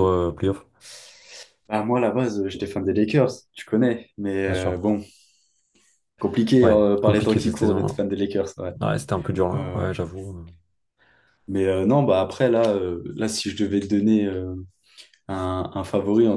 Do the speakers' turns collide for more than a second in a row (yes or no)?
yes